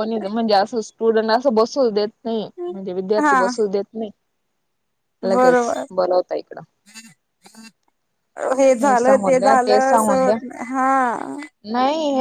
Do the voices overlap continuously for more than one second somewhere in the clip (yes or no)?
yes